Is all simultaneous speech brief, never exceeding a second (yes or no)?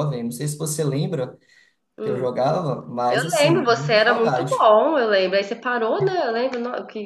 no